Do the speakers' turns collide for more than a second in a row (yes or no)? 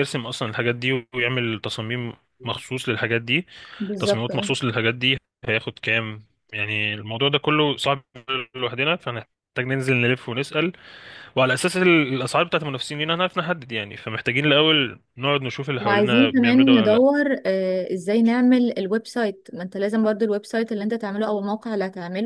yes